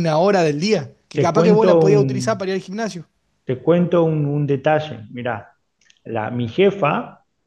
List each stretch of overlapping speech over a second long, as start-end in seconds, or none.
1.1-2.4